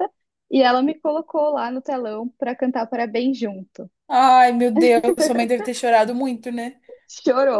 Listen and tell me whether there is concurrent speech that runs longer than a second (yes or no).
no